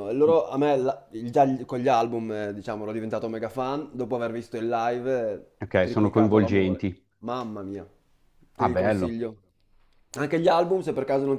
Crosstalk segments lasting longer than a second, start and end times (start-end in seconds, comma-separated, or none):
5.6-7.1